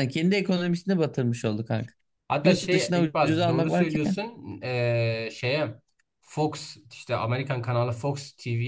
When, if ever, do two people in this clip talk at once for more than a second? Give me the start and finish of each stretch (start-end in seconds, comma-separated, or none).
2.4-4.2